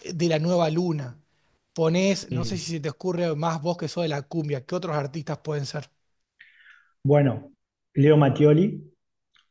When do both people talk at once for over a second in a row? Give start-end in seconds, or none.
none